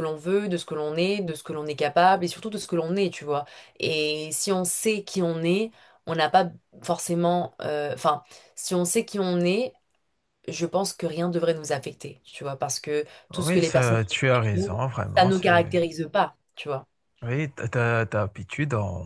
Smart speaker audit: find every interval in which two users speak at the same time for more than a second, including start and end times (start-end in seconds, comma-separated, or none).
13.3-15.8